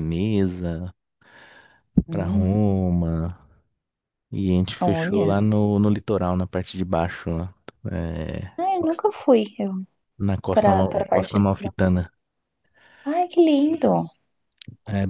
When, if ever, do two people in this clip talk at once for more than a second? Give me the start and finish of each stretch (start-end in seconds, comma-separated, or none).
10.5-11.8